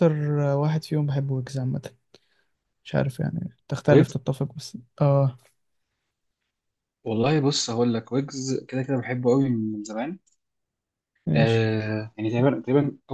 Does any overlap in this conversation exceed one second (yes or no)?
no